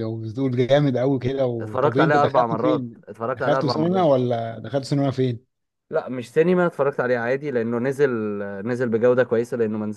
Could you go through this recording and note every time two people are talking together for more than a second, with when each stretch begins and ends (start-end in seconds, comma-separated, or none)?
1.6-4.1